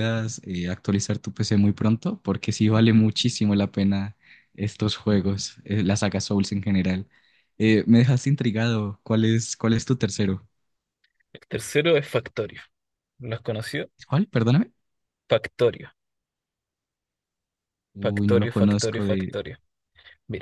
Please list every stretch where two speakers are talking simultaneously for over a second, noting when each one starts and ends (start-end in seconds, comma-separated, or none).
18.0-19.3